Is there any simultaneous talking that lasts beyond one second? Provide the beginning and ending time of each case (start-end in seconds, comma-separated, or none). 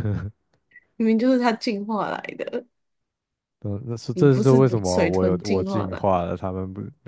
4.1-6.2